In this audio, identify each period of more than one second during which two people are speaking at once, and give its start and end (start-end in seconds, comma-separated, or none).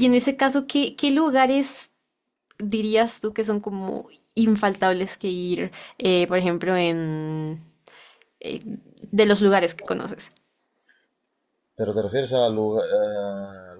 none